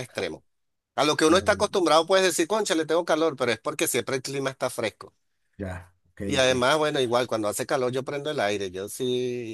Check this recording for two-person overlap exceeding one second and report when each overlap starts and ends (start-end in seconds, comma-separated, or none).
none